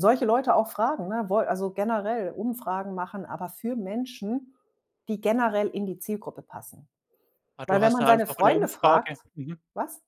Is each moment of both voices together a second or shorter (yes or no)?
no